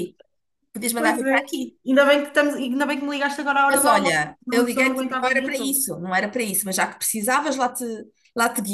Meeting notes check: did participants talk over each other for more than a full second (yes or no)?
yes